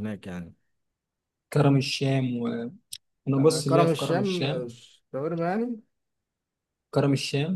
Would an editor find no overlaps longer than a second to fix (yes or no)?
no